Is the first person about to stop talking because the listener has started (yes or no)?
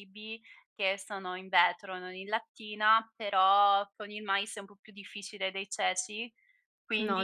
no